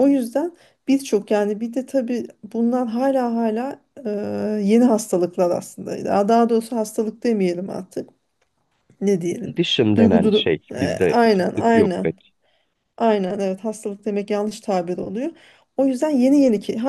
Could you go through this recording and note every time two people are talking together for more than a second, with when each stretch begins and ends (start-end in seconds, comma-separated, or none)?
10.0-12.1